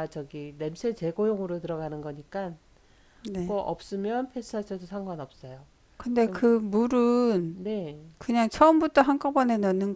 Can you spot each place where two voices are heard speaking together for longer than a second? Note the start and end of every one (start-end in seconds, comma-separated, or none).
none